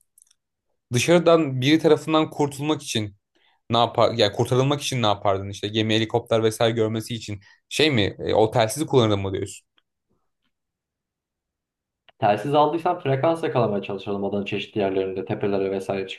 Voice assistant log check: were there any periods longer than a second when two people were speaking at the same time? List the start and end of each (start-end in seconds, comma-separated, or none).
none